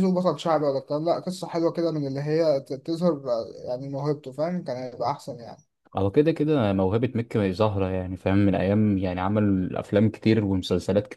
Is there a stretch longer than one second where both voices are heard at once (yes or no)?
no